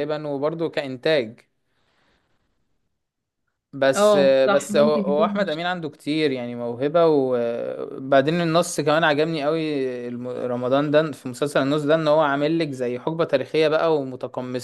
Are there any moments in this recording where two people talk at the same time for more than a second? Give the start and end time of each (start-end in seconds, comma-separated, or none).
4.0-5.6